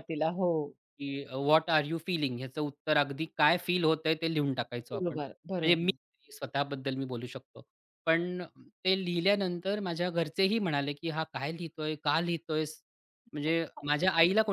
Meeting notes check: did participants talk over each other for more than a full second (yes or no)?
yes